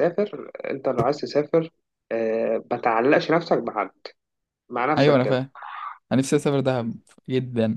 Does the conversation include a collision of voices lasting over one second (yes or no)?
no